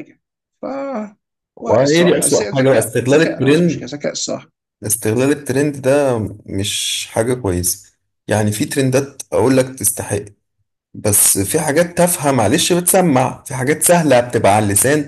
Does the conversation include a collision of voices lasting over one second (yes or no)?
yes